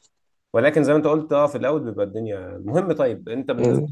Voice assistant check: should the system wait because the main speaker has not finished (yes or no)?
yes